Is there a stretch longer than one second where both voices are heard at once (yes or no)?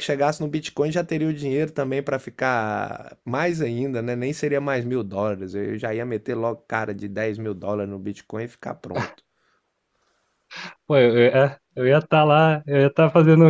no